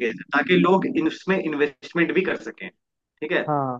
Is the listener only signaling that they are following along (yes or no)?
yes